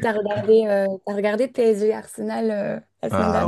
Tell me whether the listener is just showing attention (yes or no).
no